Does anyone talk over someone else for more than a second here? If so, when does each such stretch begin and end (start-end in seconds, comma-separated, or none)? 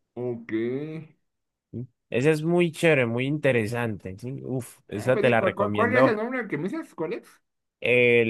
5.0-6.2